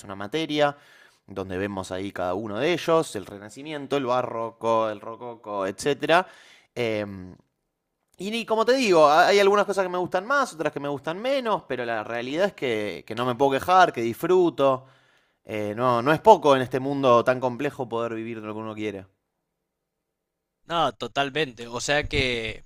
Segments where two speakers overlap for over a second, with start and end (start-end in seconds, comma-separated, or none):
none